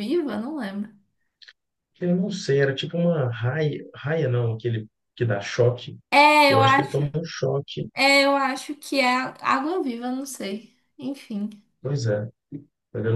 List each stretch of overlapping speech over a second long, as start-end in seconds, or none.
none